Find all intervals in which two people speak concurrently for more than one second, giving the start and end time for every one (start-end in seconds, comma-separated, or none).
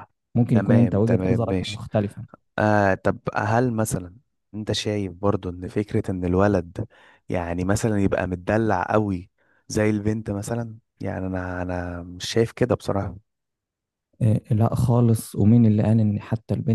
0.5-1.8